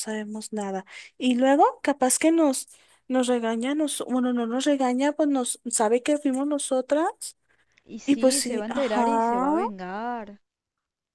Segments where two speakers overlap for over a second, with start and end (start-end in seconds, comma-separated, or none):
8.1-9.5